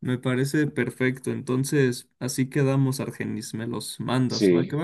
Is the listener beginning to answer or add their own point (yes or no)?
yes